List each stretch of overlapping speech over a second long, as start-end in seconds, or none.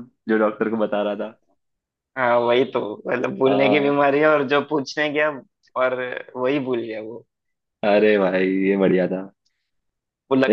none